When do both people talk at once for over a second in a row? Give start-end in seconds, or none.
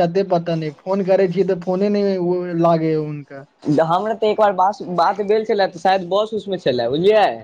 none